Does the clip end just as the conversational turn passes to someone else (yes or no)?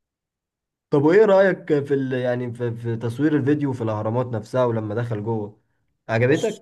yes